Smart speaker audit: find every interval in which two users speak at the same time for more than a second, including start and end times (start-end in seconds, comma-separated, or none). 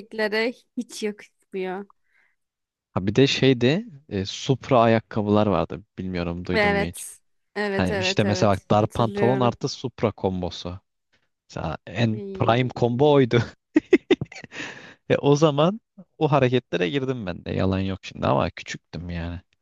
7.8-9.6